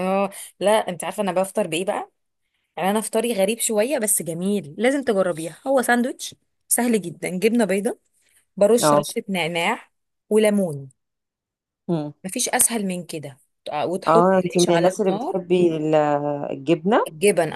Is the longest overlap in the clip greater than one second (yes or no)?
yes